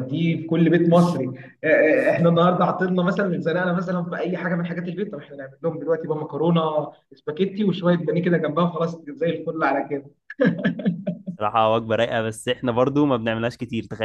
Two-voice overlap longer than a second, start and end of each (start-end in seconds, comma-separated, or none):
none